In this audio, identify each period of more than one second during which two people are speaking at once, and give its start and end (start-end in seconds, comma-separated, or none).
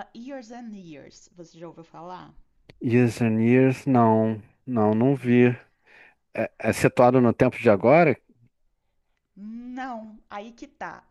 none